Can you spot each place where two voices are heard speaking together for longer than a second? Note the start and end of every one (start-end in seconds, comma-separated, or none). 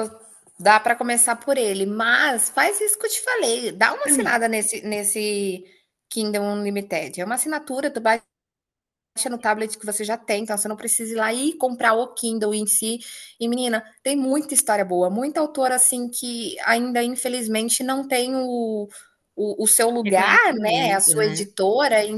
20.0-21.5